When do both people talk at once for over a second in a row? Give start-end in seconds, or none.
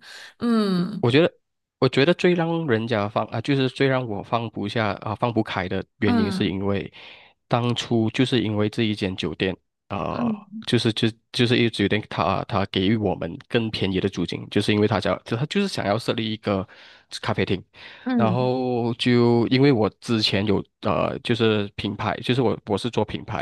none